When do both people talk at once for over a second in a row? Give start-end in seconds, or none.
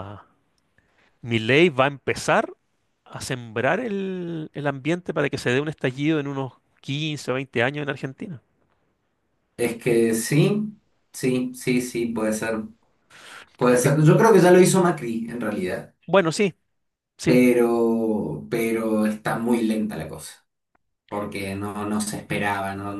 none